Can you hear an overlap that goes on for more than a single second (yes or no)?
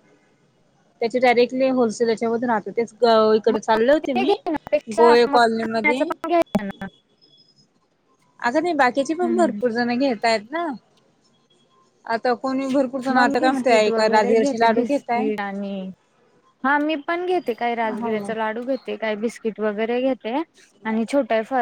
yes